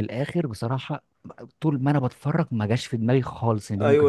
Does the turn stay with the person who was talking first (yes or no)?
no